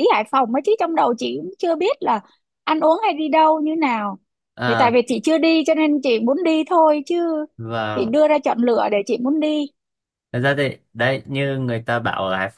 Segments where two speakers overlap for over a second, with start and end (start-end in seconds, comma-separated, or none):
none